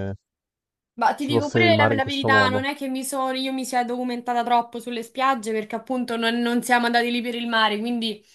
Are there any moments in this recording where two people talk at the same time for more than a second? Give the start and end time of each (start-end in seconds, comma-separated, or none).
1.2-2.6